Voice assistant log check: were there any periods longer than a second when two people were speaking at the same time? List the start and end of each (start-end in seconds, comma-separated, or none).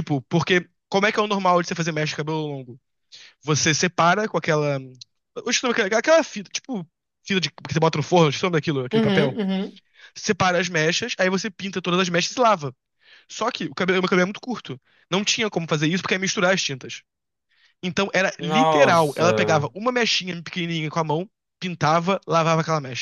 18.4-19.7